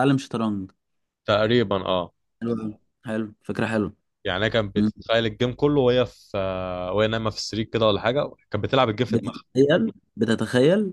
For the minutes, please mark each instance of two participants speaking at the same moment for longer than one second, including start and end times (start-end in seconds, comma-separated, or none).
none